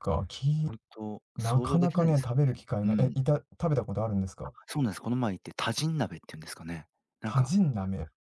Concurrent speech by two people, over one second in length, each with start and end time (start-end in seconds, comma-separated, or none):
1.4-3.1